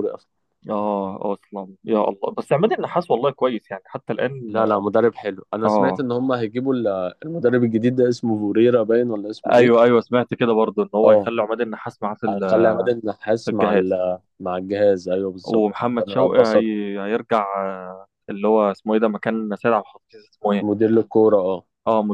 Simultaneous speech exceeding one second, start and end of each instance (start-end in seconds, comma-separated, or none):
15.4-16.7